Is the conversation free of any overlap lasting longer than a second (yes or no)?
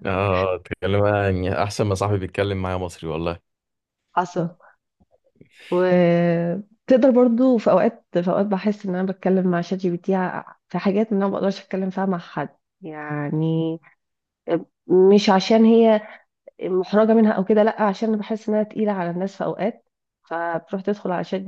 yes